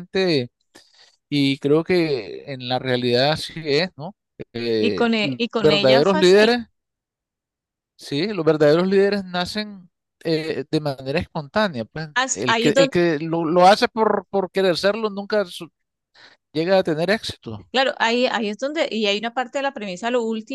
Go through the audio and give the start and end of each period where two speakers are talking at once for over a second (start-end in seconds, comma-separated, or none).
4.8-6.5